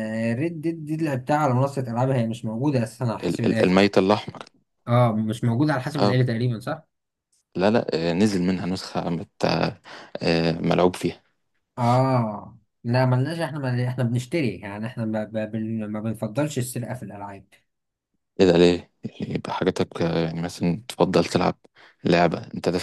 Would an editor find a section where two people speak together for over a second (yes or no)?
no